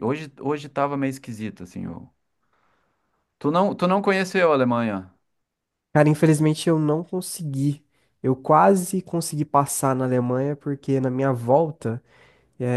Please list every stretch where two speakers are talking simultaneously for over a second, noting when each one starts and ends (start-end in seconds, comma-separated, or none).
none